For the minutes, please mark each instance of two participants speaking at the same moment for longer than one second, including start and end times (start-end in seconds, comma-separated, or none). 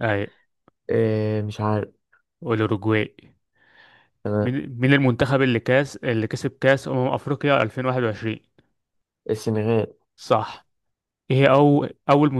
none